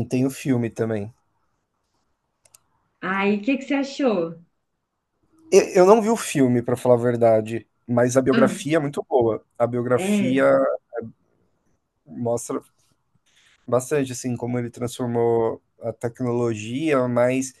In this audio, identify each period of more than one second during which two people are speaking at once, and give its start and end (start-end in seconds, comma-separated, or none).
none